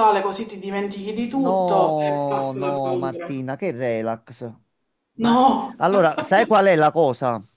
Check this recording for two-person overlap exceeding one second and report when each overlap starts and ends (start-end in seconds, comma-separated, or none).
1.3-3.3